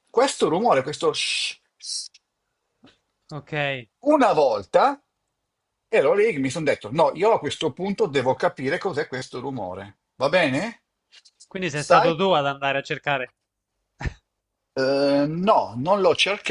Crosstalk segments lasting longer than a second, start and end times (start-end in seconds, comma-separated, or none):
none